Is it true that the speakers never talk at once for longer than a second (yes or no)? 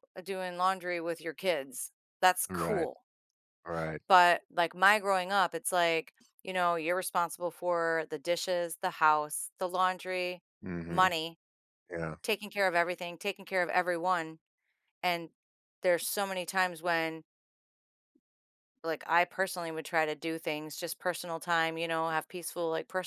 yes